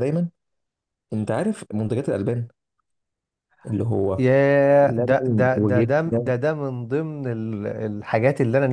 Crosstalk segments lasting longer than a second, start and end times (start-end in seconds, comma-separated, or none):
4.9-6.3